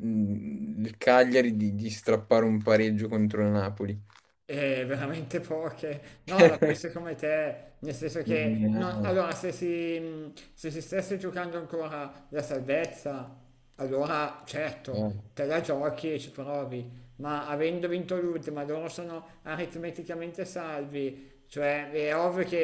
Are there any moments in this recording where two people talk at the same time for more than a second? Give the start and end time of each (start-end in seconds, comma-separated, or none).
none